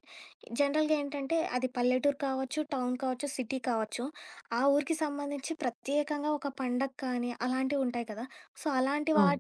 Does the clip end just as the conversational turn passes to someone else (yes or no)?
no